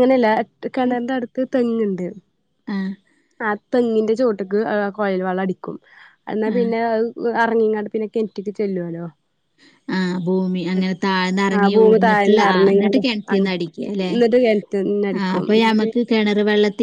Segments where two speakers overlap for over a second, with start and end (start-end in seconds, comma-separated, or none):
11.6-13.5